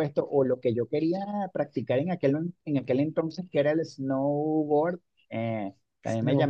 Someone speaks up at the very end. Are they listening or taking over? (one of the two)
listening